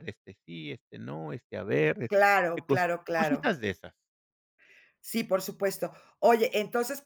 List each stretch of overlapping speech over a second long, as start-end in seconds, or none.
2.1-3.5